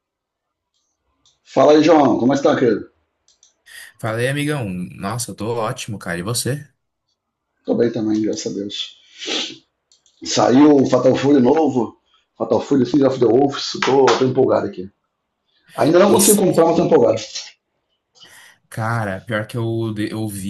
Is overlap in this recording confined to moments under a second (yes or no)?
yes